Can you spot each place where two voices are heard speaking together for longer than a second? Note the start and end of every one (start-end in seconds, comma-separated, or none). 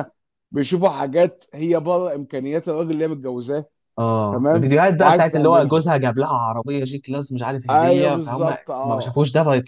4.3-5.9, 7.7-9.2